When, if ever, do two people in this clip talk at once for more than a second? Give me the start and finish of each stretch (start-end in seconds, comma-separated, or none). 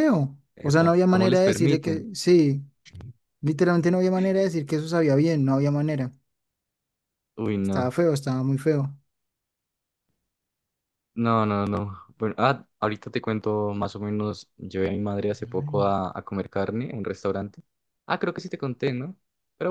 0.6-2.0